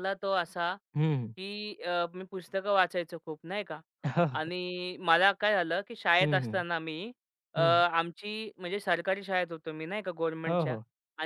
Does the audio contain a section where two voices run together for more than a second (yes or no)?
no